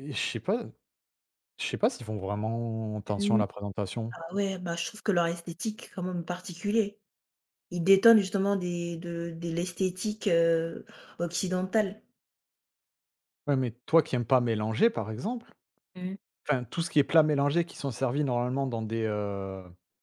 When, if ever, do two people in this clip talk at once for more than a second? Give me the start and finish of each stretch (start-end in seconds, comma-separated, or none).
none